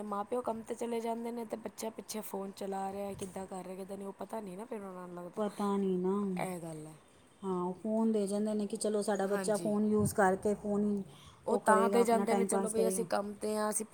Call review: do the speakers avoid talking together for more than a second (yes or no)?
no